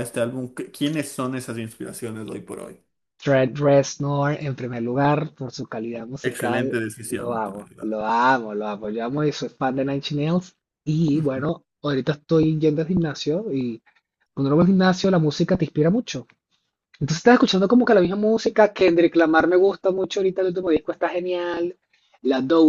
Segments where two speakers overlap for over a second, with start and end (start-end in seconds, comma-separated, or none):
6.2-8.0